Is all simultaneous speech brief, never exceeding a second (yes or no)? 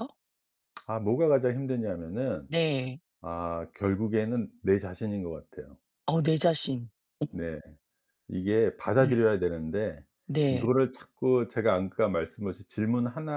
yes